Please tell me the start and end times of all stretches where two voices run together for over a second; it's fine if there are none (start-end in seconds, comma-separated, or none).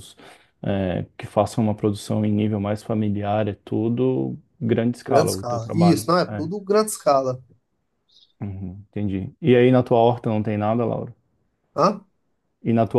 5.1-6.5